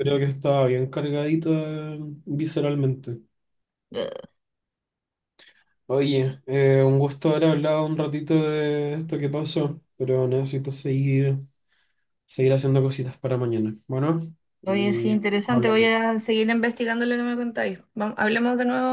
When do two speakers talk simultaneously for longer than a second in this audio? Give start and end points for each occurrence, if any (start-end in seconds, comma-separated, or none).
14.7-15.9